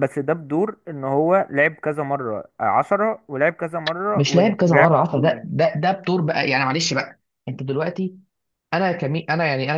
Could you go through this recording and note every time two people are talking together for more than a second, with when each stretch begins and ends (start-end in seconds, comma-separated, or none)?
4.2-5.5